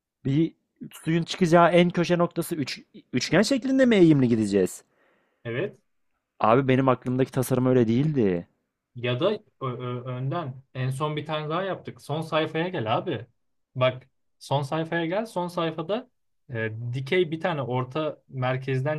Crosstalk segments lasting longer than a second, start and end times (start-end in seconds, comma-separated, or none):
none